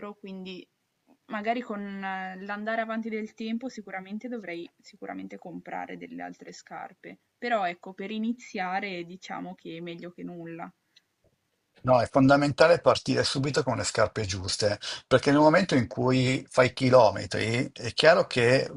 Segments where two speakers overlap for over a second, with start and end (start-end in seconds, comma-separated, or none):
none